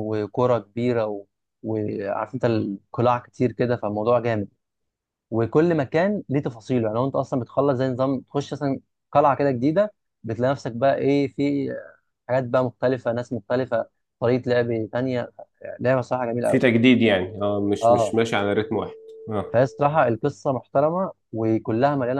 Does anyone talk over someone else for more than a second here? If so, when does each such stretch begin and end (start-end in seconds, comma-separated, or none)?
none